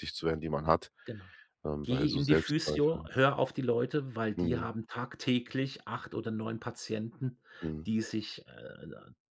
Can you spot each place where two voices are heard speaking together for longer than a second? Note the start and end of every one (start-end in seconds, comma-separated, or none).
1.8-3.1